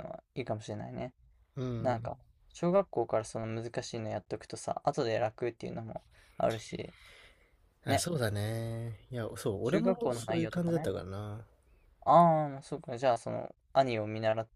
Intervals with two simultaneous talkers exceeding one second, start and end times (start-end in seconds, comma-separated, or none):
9.6-10.9